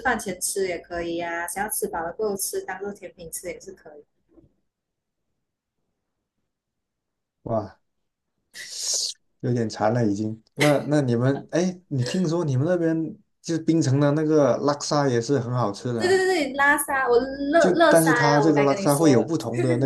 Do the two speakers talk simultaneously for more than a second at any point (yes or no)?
yes